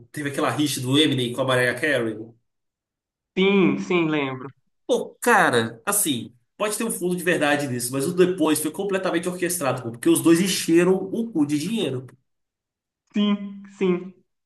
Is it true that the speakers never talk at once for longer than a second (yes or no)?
yes